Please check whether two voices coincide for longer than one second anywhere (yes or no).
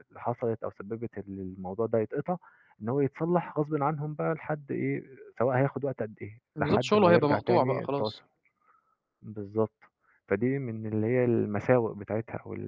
yes